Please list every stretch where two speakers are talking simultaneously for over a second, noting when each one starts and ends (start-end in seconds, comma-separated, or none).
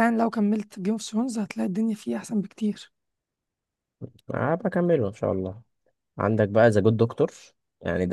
none